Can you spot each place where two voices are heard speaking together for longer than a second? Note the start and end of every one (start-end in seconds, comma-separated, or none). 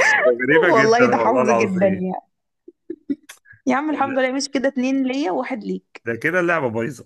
0.8-2.1